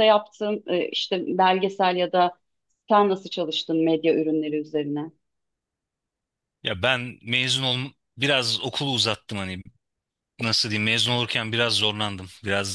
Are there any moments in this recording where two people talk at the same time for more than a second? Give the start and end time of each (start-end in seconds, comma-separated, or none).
none